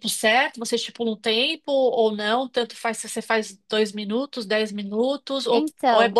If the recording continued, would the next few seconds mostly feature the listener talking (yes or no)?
no